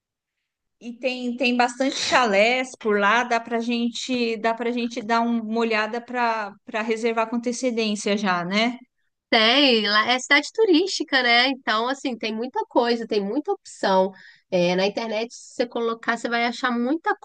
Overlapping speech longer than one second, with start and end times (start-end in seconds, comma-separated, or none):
none